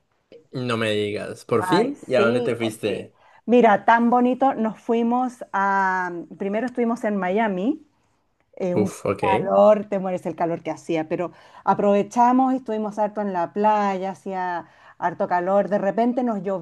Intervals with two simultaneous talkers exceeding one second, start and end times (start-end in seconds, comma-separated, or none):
1.6-3.1